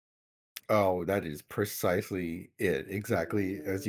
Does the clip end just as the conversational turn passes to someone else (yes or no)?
yes